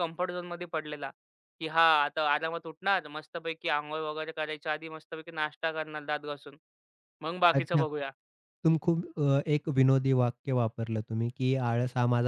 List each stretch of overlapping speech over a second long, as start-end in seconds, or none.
none